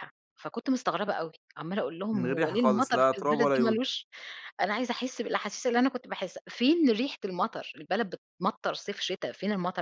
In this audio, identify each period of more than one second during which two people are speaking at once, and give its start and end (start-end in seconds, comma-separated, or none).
2.1-3.8